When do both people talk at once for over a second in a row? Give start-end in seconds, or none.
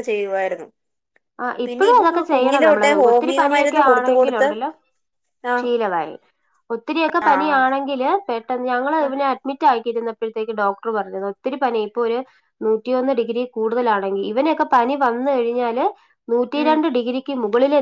1.6-4.5